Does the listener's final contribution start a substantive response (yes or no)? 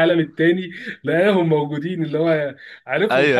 yes